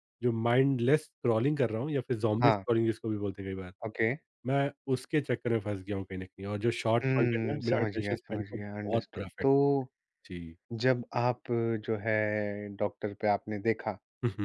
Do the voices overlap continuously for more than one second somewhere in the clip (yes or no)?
yes